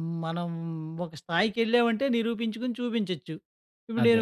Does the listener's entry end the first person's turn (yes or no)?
no